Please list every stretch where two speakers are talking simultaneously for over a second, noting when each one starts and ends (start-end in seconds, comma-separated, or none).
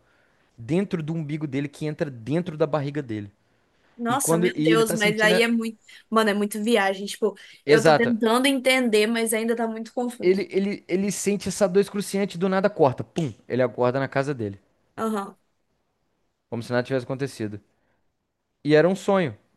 4.1-5.5